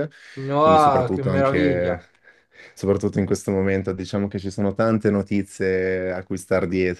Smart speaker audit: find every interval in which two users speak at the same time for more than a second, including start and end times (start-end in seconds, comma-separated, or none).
0.6-2.0